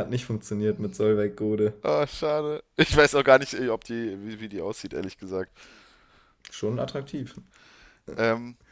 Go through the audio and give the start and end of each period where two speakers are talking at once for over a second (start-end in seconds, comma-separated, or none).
none